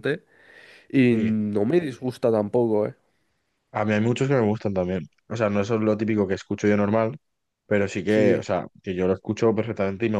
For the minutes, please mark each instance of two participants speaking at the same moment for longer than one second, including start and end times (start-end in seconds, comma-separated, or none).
none